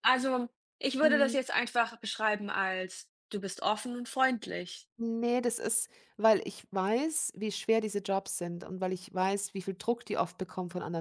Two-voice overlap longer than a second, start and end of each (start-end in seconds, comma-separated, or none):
none